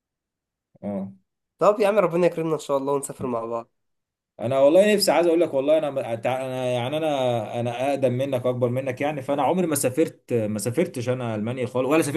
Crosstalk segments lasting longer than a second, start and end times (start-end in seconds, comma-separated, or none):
none